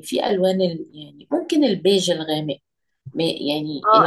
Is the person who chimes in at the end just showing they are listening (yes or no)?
no